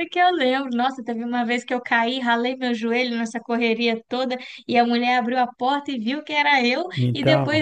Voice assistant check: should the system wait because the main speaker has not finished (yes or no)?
yes